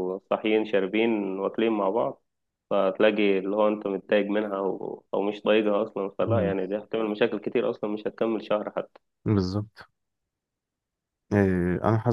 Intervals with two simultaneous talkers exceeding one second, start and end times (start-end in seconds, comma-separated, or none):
none